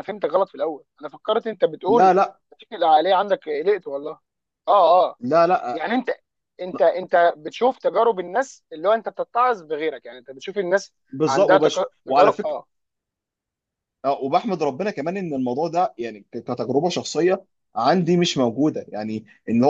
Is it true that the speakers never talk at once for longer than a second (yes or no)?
no